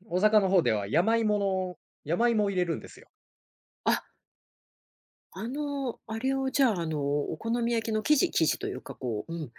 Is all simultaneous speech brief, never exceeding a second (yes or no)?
yes